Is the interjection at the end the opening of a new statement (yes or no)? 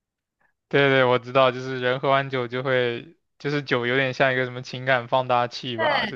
yes